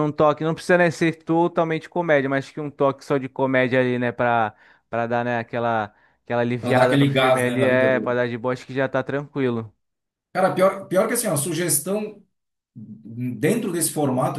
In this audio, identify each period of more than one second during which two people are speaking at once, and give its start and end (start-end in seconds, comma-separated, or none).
6.6-8.2